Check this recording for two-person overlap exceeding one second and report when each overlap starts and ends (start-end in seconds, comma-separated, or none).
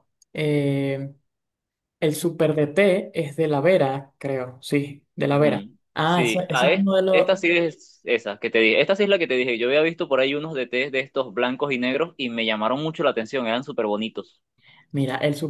5.3-7.3